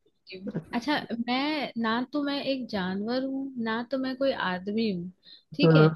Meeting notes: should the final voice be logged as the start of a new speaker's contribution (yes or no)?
no